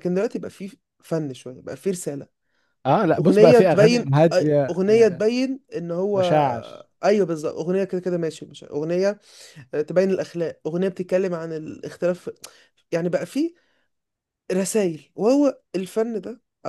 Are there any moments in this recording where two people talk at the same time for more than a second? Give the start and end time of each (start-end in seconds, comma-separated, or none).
3.2-5.2